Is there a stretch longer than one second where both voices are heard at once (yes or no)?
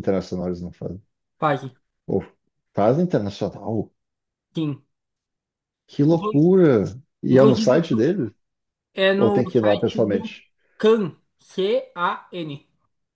yes